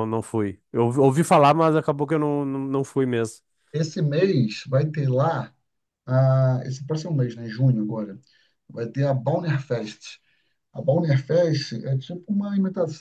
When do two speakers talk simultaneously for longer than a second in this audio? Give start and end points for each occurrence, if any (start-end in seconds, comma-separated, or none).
none